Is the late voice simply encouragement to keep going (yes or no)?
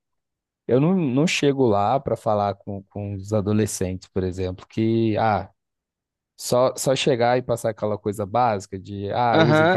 no